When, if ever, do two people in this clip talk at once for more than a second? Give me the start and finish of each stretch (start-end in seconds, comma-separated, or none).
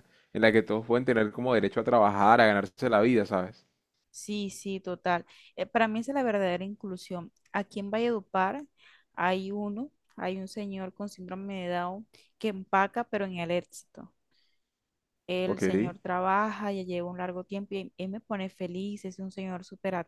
none